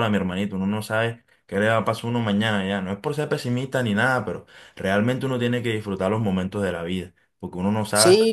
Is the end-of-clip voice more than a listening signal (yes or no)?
yes